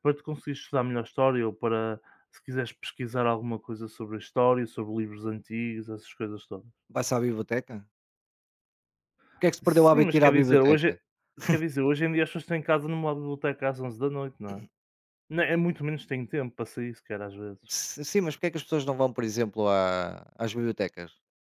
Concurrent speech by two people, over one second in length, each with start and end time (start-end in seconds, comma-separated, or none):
9.6-10.9